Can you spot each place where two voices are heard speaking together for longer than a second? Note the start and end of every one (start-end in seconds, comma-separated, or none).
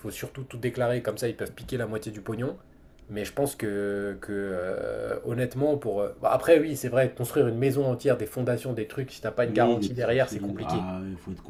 9.4-10.9